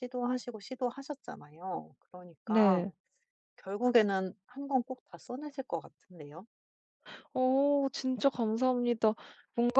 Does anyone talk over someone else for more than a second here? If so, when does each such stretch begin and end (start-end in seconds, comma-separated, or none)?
none